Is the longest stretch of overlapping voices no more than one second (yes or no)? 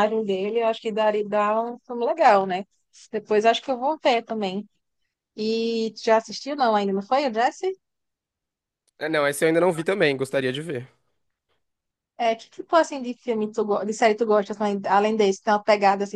yes